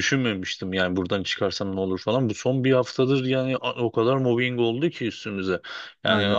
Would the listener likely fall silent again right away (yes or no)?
yes